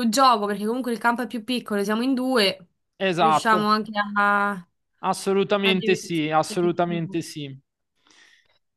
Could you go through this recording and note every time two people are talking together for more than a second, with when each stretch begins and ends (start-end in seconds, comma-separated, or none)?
5.7-7.2